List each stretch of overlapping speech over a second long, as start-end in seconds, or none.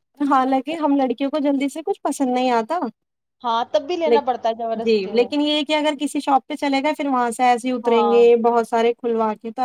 none